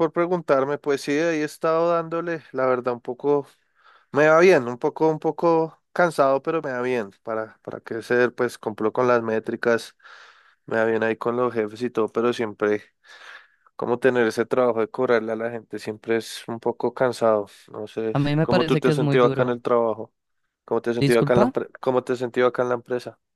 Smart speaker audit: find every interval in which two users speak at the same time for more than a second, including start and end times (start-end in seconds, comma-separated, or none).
18.1-19.6